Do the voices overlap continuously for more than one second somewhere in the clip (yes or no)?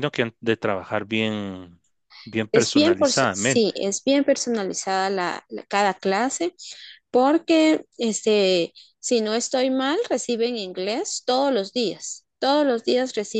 yes